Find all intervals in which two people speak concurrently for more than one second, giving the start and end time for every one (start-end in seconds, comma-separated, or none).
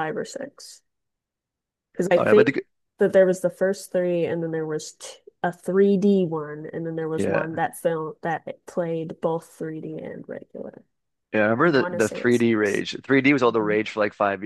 11.6-12.8